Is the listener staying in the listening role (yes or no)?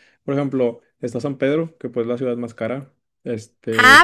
no